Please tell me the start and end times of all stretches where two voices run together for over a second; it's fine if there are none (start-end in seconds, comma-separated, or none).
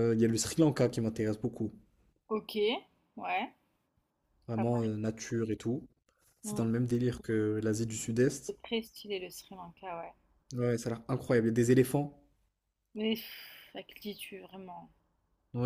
none